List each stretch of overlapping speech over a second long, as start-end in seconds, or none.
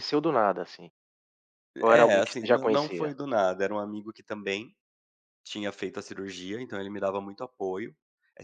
1.9-3.1